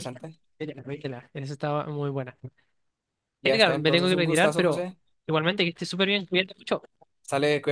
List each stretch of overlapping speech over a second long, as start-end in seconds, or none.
3.4-4.9